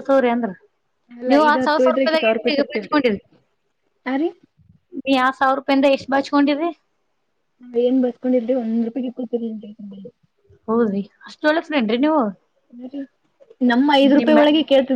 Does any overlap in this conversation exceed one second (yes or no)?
yes